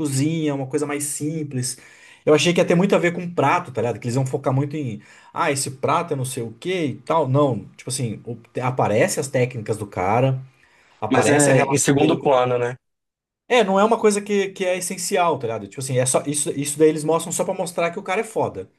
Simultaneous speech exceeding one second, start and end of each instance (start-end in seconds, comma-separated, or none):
11.1-12.3